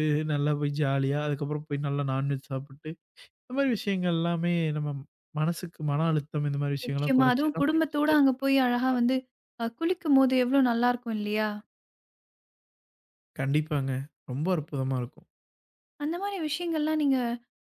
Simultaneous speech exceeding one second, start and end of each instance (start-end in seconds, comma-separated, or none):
6.8-9.0